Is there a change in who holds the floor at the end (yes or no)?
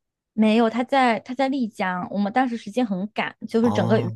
no